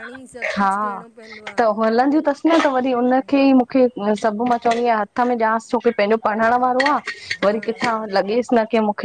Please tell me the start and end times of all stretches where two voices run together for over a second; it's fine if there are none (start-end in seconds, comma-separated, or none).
none